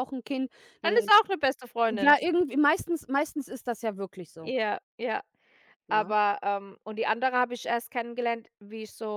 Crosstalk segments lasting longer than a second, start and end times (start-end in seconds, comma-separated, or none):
none